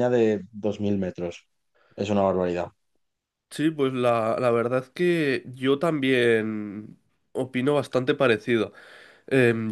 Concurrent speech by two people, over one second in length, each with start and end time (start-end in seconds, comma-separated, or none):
none